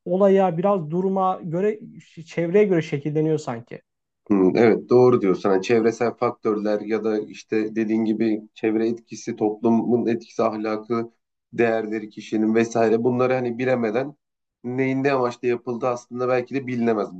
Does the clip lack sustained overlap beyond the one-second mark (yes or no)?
yes